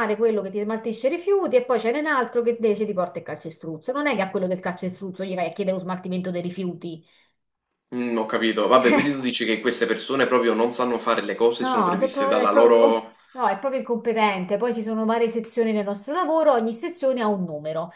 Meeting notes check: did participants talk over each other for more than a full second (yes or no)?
yes